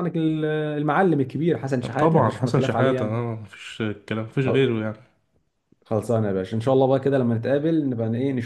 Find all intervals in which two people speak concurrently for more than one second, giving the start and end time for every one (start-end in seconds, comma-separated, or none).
2.0-3.2